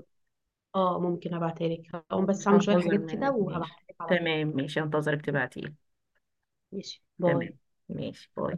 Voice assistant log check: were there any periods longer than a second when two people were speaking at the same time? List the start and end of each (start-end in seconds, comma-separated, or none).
2.1-4.3